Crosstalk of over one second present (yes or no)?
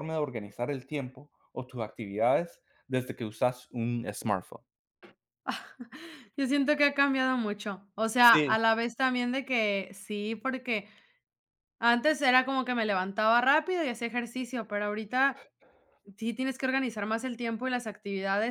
no